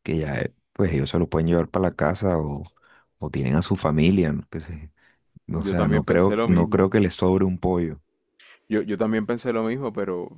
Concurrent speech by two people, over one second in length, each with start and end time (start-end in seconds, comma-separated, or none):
5.6-7.0